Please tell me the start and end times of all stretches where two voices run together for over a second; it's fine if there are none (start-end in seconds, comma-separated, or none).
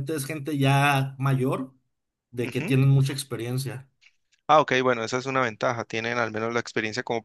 none